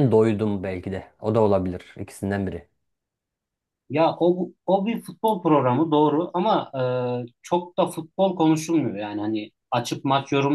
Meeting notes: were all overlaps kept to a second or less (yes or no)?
yes